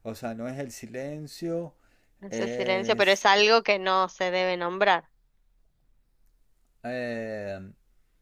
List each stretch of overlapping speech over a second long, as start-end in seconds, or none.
2.3-3.5